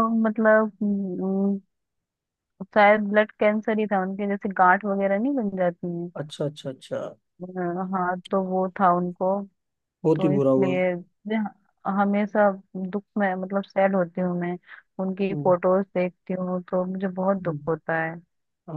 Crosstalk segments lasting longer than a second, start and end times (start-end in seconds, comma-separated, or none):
none